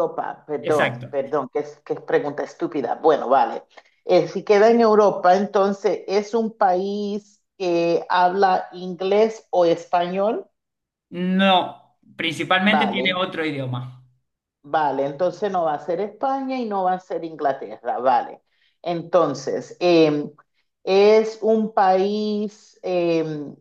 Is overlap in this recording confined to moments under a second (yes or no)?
yes